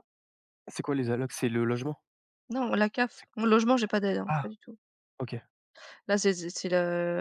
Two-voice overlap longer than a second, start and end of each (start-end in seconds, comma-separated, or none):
none